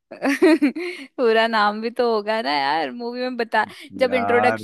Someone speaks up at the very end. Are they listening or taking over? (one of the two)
listening